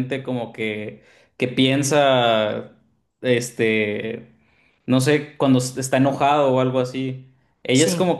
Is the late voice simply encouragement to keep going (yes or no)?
yes